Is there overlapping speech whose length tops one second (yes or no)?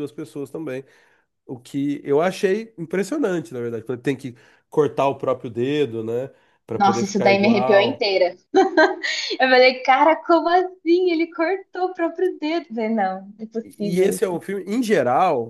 yes